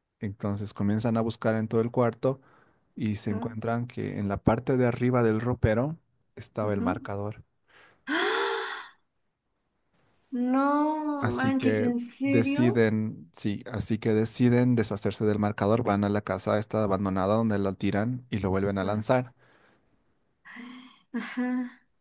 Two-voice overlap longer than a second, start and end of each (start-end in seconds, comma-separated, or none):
11.2-12.9